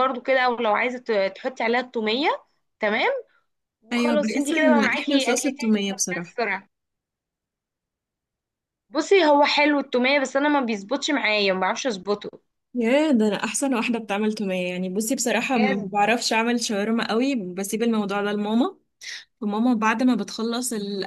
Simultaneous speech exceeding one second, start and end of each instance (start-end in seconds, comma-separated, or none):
3.9-6.3